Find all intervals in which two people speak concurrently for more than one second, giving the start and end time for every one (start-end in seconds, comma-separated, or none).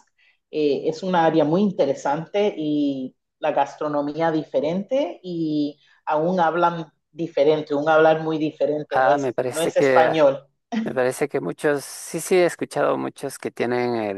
8.9-10.2